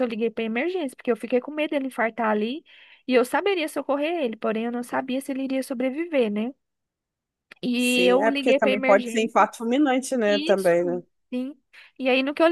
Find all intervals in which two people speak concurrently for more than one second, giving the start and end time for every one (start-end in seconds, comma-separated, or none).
7.8-9.5